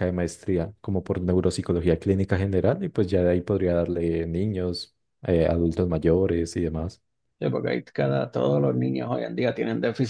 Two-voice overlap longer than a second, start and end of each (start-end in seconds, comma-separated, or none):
none